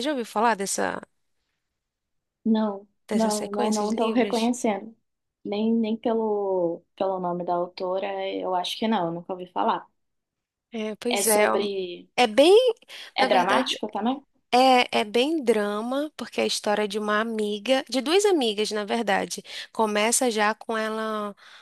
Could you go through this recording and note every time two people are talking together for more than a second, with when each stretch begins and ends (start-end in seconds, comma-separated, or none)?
3.1-4.5